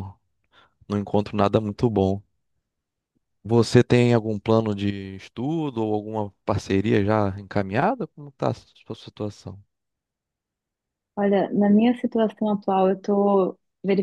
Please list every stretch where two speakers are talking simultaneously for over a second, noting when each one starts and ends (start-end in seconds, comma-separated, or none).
none